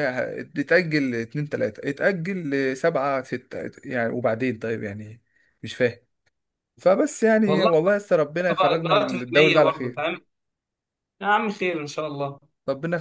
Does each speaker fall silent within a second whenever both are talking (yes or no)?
no